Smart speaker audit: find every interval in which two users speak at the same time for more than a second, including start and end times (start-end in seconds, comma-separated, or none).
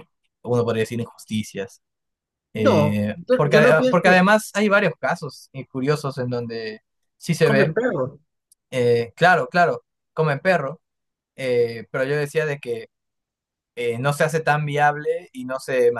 2.5-4.2